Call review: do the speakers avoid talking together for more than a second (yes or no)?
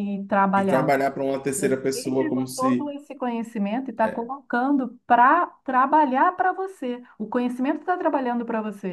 no